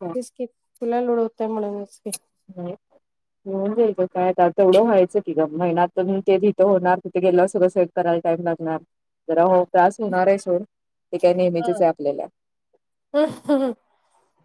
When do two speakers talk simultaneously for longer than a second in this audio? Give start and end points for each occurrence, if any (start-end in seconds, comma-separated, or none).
none